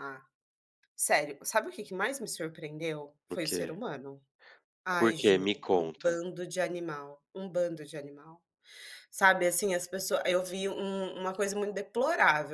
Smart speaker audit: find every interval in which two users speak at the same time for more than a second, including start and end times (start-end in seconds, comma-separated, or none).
5.0-6.2